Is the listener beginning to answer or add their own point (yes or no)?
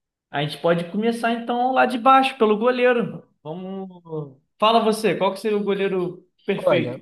yes